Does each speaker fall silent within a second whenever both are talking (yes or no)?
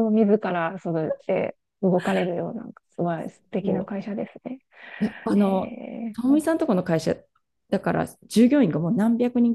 yes